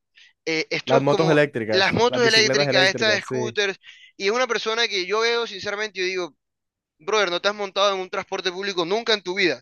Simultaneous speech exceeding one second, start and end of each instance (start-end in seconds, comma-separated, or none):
0.8-3.6